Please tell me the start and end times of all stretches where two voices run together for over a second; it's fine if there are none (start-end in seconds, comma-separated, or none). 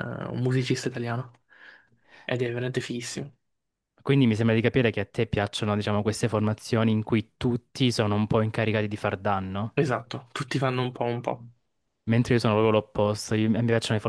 none